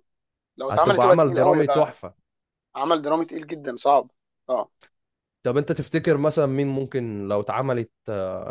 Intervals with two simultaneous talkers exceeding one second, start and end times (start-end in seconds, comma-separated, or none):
0.7-2.0